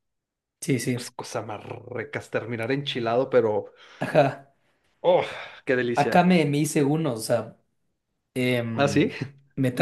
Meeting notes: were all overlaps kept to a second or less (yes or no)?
yes